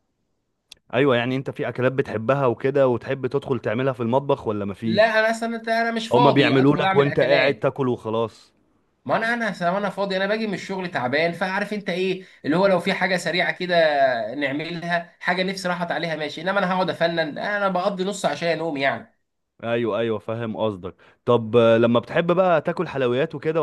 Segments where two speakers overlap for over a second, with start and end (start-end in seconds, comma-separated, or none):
6.1-7.7